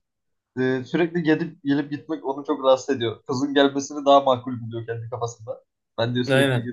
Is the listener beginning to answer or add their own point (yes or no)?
no